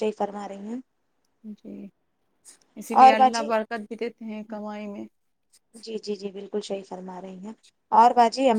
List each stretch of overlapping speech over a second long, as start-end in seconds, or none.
none